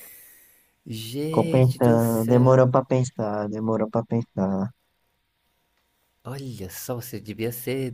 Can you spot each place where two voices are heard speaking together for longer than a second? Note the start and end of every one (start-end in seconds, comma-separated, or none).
1.3-2.6